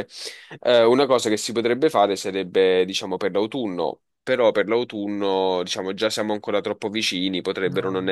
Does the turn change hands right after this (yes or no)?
no